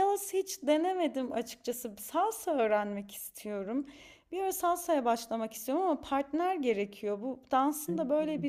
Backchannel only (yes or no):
yes